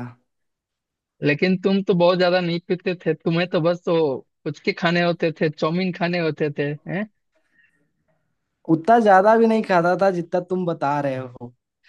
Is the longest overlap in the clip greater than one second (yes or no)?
no